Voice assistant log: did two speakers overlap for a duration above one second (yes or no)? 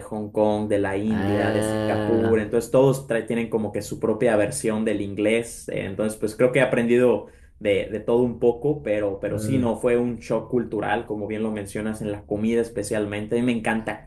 yes